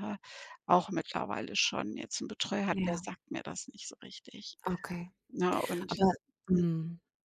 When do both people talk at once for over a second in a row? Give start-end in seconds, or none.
none